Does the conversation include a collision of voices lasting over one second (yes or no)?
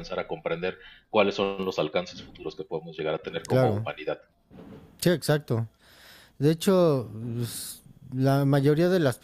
no